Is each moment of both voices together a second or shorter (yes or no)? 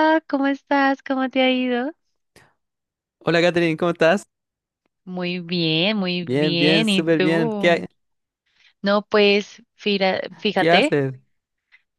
no